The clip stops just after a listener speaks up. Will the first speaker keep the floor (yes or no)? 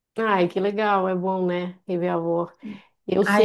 yes